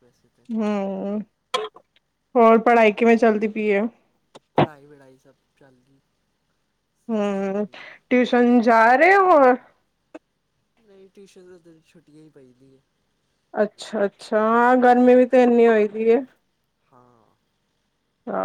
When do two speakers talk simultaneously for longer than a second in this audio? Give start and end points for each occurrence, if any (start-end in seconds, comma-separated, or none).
none